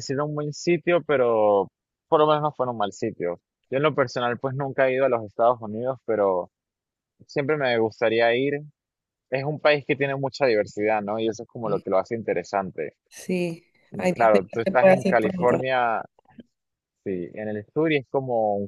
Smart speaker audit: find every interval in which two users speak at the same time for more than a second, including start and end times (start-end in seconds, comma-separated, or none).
13.9-15.6